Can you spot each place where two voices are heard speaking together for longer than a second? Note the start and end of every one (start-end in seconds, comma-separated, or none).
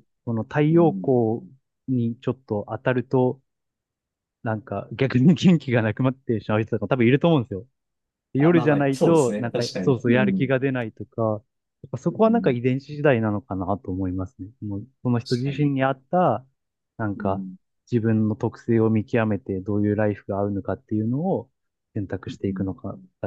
8.4-10.6